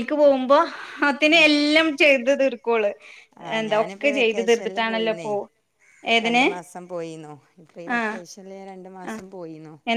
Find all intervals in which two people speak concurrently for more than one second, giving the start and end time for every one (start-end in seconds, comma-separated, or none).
3.6-5.3